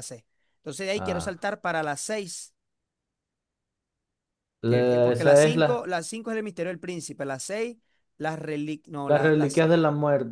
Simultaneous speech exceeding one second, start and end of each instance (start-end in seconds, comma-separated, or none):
4.6-5.9